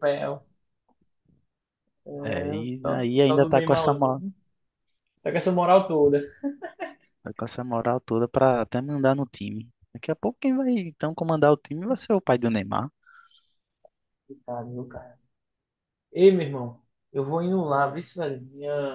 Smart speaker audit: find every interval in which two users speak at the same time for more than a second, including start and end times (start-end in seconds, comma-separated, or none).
2.6-4.2